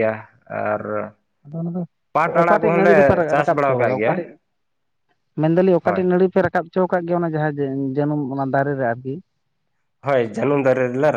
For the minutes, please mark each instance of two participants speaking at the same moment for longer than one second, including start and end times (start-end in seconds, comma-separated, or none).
2.4-4.1